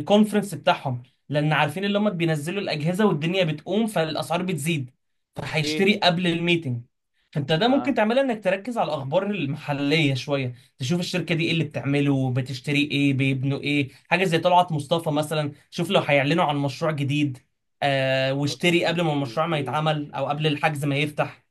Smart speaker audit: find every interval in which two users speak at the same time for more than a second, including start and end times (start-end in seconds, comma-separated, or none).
18.6-19.8